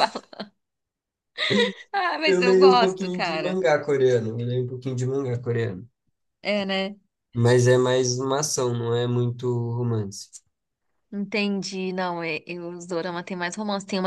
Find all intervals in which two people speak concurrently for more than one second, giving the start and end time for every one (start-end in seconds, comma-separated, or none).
2.3-3.6